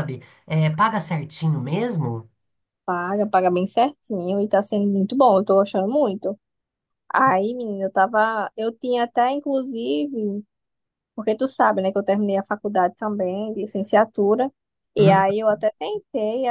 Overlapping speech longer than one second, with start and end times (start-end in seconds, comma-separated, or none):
none